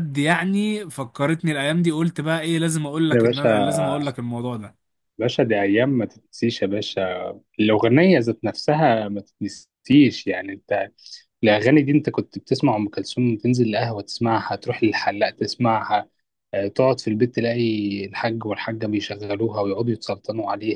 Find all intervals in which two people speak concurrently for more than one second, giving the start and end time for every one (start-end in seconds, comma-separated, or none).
none